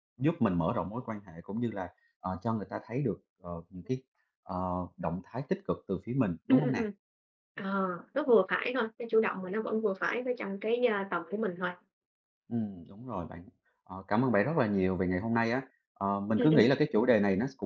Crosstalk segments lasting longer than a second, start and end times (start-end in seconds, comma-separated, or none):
none